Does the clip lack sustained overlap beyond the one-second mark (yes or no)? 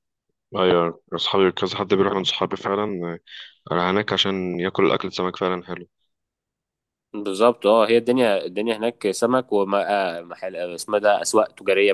yes